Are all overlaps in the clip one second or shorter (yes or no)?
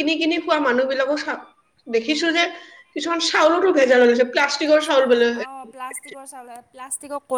yes